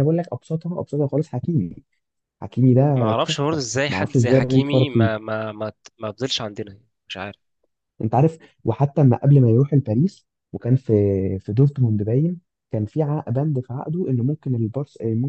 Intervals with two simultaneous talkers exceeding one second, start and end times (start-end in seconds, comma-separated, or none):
3.0-5.1